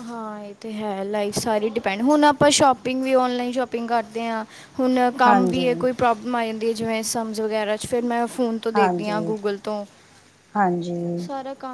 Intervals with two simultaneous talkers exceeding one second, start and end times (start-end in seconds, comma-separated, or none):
none